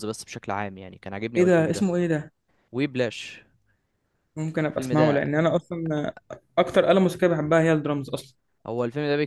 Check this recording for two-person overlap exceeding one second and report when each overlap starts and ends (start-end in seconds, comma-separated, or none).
none